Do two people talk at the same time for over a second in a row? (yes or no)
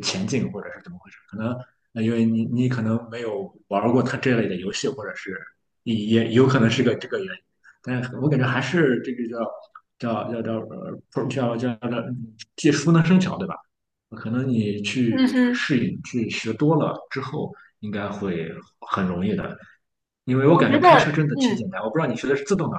yes